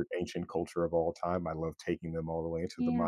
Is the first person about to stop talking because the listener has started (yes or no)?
no